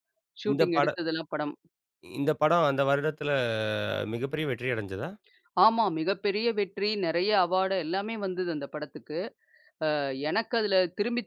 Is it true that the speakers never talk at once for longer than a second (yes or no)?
yes